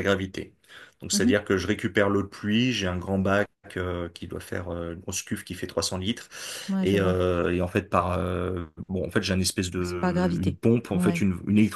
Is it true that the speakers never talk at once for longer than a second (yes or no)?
no